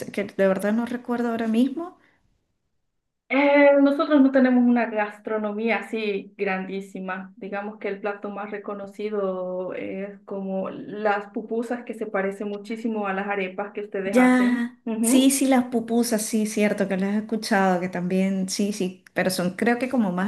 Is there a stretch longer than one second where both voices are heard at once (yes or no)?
yes